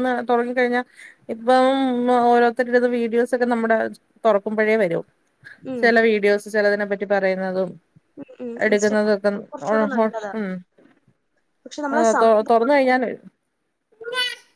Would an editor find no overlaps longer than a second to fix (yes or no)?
no